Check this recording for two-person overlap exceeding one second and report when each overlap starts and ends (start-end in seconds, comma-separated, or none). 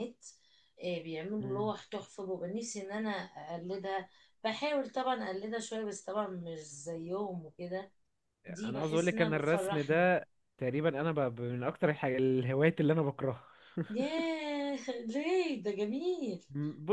8.6-10.1